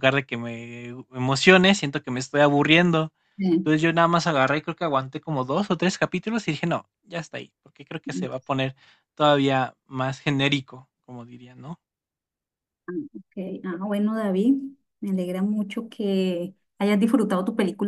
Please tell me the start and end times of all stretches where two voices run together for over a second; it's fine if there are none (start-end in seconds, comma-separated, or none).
none